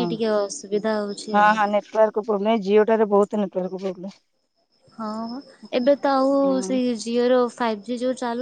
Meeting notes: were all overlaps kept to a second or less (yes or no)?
yes